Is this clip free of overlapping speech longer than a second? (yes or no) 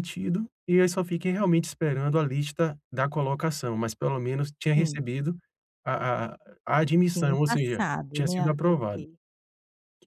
no